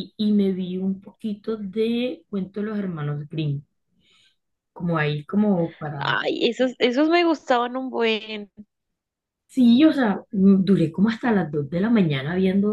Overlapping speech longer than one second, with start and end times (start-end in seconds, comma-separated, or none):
none